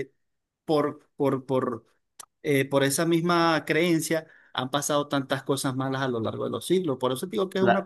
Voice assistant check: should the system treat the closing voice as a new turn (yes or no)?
yes